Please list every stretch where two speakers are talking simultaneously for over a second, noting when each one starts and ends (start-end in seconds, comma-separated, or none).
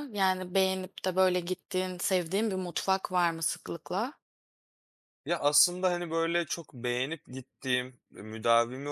none